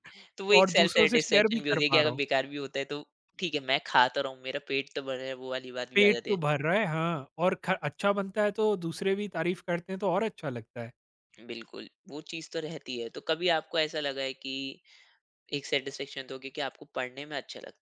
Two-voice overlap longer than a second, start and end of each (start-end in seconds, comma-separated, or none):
0.5-2.2